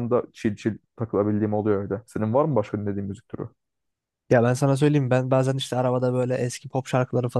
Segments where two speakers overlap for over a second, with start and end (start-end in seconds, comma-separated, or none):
none